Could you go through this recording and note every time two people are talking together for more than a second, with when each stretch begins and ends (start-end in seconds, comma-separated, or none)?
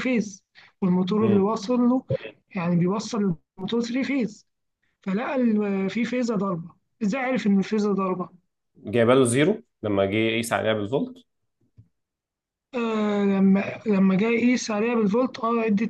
none